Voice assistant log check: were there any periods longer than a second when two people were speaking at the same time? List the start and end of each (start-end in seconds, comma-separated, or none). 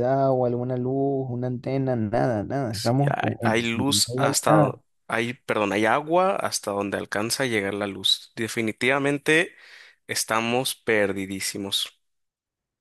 2.7-4.8